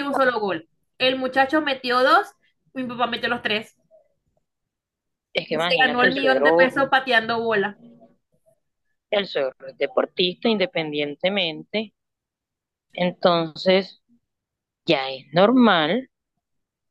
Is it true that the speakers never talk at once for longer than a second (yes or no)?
no